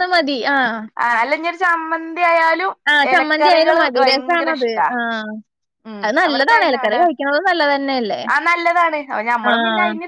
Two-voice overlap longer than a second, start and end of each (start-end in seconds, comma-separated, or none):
3.1-4.9